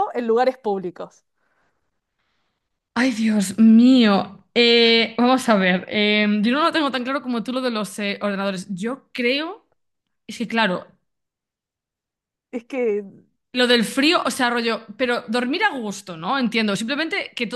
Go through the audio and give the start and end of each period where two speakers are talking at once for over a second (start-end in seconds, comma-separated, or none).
none